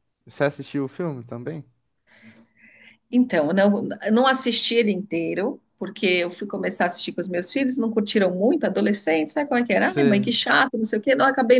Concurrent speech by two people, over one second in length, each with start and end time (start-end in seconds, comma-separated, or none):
none